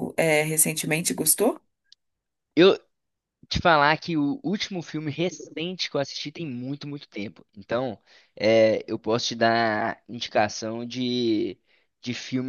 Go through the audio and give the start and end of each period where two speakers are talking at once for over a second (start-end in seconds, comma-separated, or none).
none